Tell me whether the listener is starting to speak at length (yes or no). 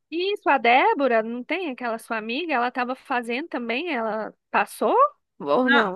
yes